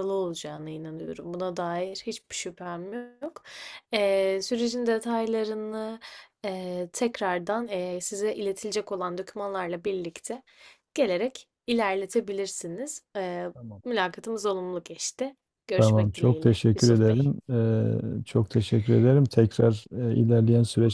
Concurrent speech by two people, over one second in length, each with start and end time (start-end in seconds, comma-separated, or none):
15.8-17.3